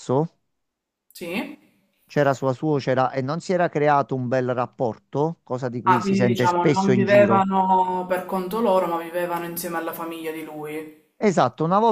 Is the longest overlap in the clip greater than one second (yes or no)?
yes